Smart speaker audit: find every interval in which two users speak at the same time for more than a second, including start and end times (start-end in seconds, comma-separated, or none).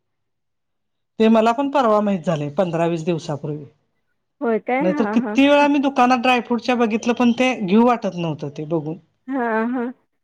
none